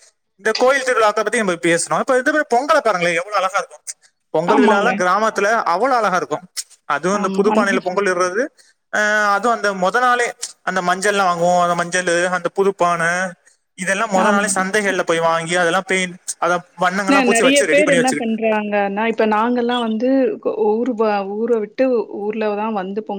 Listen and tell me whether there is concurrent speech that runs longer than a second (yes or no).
no